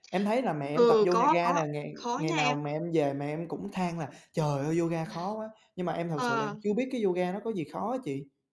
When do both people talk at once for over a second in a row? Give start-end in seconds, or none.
0.7-2.6